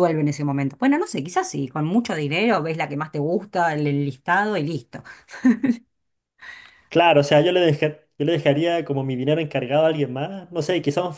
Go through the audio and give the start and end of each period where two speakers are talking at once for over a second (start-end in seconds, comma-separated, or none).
none